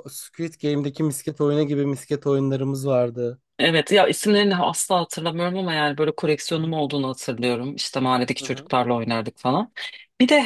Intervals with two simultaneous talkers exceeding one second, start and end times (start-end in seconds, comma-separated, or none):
none